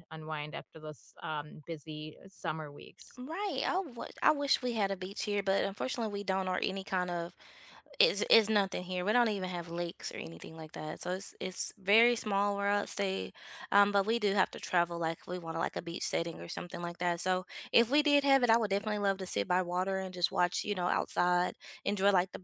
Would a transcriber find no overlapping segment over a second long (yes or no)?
yes